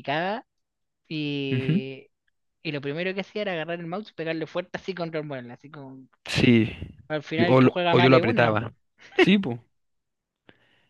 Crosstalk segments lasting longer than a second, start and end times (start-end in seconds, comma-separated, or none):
7.3-8.6